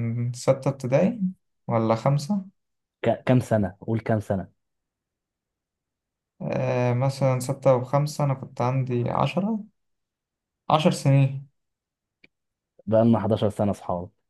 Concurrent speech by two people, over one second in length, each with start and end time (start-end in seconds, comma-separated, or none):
none